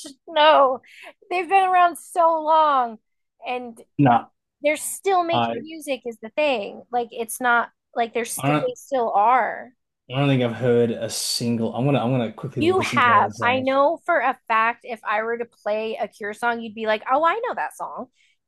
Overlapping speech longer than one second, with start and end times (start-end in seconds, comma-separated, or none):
12.6-13.8